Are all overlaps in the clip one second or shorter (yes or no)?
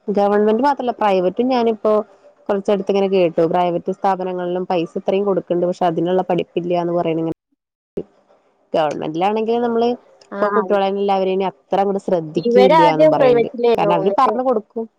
no